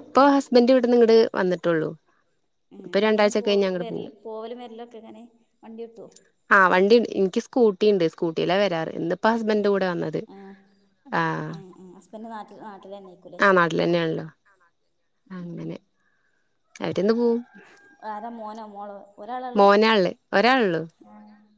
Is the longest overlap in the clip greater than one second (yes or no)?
no